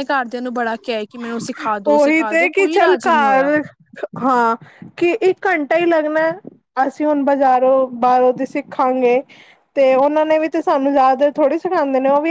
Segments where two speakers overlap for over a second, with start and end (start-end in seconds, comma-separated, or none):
1.9-3.5